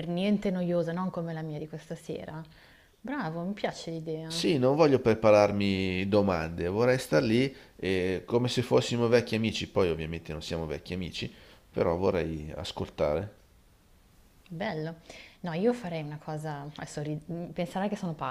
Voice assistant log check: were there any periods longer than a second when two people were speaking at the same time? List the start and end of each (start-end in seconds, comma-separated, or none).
none